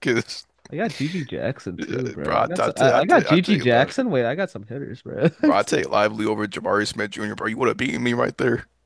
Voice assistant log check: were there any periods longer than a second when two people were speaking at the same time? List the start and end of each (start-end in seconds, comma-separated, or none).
2.2-3.9